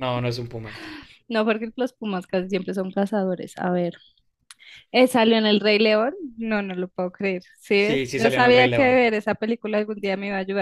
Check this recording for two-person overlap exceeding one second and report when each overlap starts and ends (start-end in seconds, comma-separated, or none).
7.8-9.0